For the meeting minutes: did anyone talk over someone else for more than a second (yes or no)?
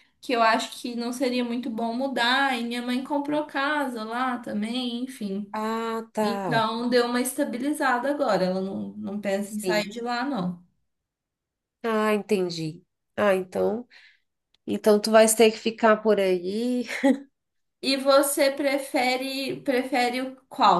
no